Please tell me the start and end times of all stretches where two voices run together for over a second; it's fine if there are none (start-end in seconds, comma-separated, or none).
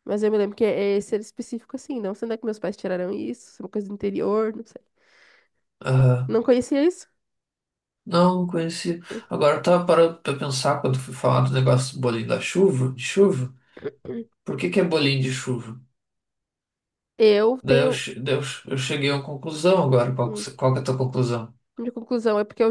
none